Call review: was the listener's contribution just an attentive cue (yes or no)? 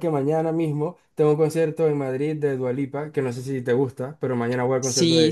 no